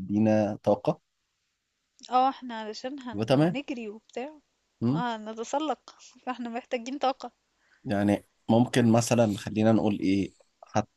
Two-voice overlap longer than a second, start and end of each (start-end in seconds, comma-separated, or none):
none